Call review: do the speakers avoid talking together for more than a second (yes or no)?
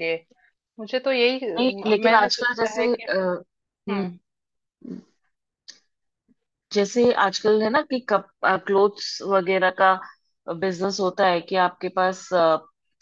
no